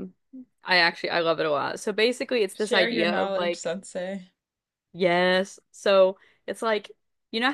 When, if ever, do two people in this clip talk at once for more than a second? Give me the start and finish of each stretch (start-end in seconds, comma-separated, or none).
2.5-3.8